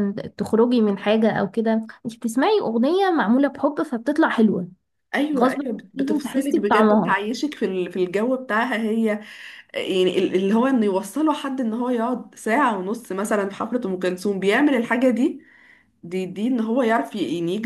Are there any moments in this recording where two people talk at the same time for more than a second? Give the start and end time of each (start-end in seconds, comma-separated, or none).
5.4-7.2